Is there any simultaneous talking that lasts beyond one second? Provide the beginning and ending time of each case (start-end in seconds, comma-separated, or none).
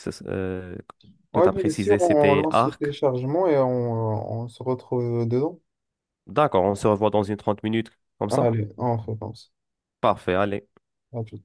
1.3-2.9